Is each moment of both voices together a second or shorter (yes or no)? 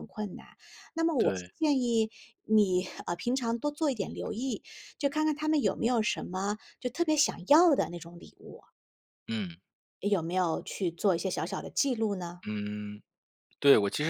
yes